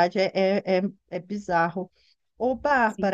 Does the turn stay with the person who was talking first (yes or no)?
yes